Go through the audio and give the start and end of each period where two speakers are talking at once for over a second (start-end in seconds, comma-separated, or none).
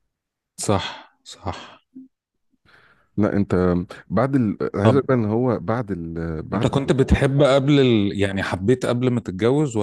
none